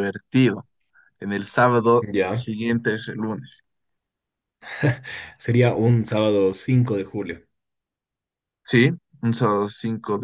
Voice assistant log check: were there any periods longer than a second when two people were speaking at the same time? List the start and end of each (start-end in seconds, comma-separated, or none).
none